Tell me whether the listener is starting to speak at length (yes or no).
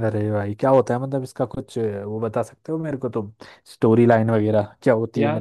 no